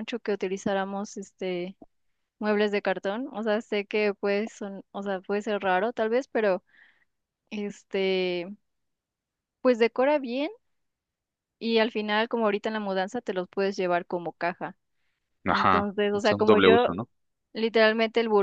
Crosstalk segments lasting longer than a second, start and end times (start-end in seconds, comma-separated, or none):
15.5-16.9